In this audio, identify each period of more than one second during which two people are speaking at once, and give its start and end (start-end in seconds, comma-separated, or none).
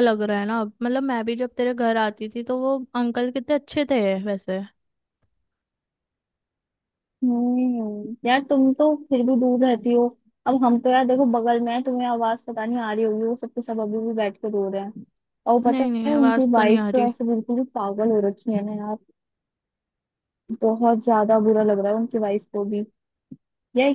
15.7-17.1